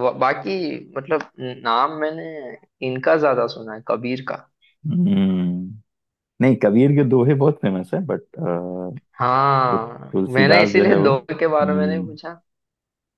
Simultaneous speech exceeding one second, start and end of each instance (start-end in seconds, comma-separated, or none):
10.1-12.0